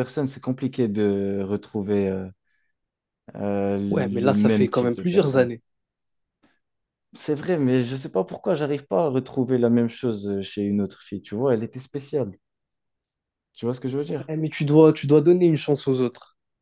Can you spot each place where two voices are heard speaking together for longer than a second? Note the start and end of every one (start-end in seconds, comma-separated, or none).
3.9-5.5